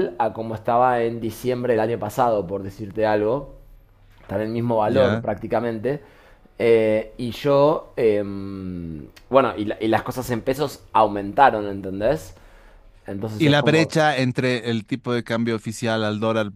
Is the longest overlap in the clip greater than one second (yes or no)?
no